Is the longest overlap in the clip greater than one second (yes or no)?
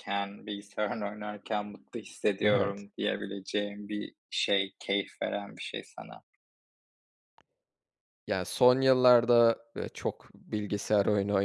no